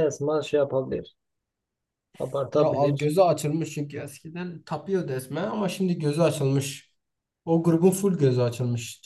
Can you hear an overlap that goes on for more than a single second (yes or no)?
no